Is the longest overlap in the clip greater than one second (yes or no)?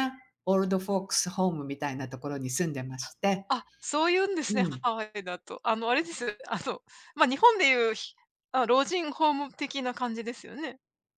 no